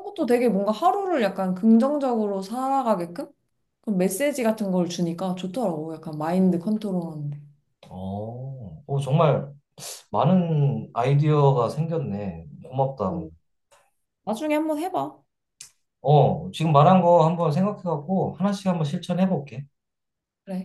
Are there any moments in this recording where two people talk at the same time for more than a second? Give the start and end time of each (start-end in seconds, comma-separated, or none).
none